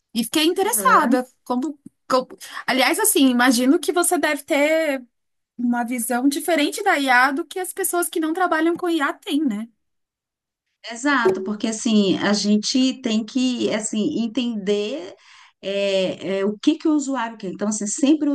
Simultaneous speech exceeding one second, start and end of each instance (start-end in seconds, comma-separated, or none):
none